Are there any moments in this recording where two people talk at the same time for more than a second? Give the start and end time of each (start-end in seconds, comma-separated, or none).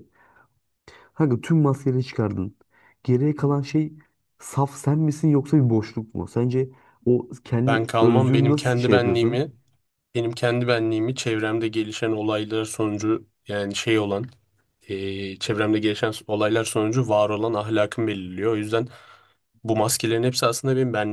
7.7-9.5